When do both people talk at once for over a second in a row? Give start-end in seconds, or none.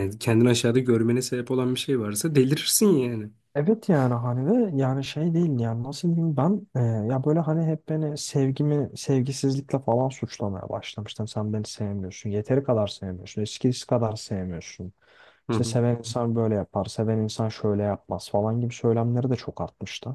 none